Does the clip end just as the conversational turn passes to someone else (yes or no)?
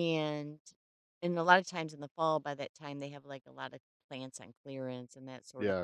yes